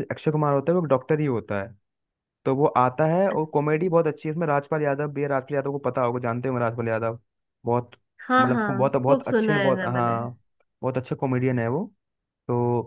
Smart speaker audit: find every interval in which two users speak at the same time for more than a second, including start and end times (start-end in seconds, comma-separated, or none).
8.4-10.2